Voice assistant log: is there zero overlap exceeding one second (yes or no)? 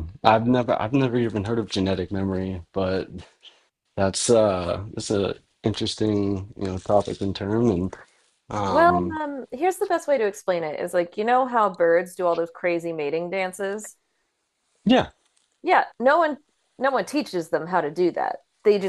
yes